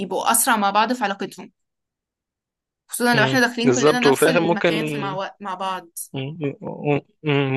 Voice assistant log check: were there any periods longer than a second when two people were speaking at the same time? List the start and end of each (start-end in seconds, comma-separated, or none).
3.1-4.7